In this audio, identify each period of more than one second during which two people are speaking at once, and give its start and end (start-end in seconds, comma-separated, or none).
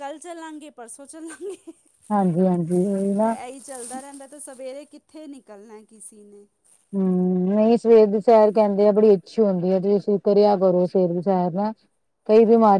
none